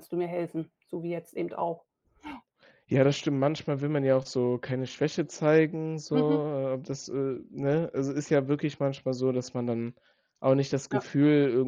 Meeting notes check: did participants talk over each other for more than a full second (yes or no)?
no